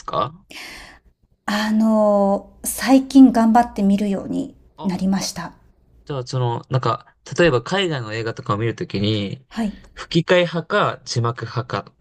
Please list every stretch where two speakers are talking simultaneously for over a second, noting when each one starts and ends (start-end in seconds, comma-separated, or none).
none